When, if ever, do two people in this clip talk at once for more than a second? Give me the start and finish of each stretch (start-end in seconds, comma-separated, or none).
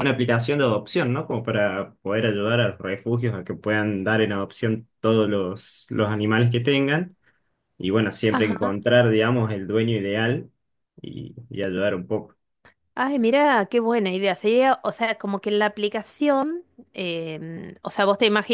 none